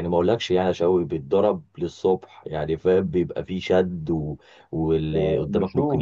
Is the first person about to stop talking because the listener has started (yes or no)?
no